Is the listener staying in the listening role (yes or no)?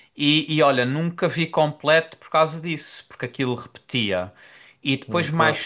yes